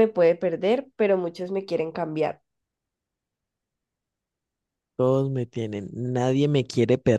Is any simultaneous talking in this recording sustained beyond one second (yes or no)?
no